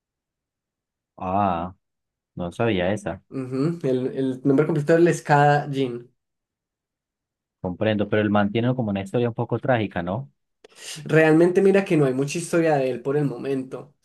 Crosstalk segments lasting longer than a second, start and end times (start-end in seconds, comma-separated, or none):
none